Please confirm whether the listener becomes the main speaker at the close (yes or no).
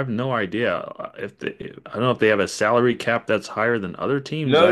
yes